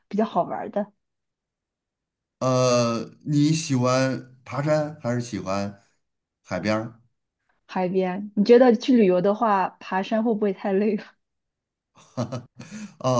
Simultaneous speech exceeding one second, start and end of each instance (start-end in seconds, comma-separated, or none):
none